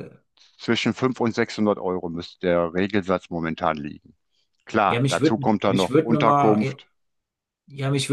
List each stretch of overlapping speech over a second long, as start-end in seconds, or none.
4.9-6.8